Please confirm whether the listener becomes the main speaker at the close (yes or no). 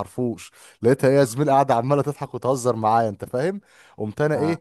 no